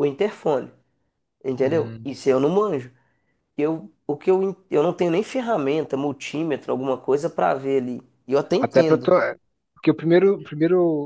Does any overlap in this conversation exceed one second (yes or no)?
no